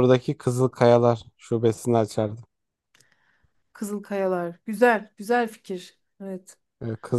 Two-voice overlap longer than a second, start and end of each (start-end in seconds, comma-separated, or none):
none